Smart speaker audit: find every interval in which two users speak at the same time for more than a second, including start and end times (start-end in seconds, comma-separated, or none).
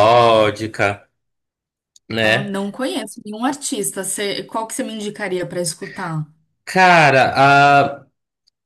none